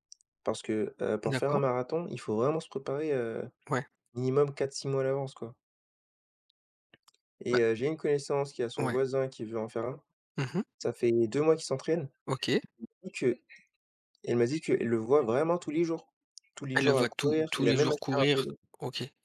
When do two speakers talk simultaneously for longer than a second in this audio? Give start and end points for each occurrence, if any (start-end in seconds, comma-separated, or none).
16.7-18.6